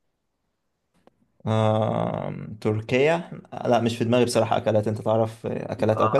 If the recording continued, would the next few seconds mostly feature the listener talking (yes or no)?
yes